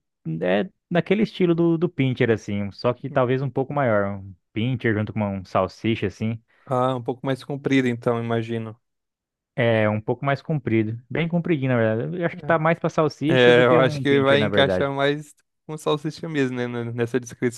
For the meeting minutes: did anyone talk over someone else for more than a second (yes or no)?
yes